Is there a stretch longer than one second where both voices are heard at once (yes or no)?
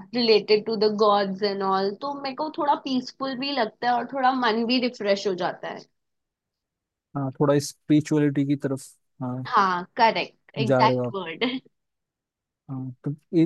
no